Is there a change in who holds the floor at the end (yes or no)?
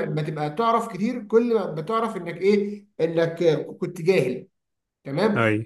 no